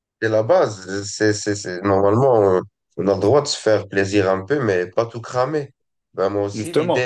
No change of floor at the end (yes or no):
yes